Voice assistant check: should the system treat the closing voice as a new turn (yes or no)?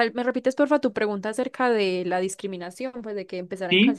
yes